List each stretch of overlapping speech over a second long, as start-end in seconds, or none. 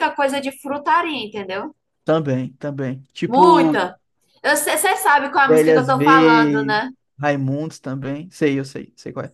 5.5-6.8